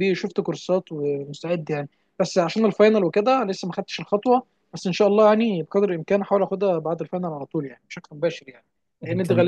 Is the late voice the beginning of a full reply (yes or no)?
no